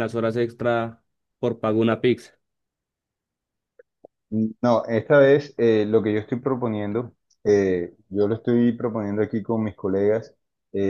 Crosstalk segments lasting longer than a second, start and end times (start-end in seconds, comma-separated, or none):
none